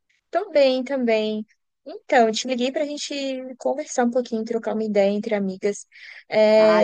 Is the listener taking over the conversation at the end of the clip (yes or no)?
yes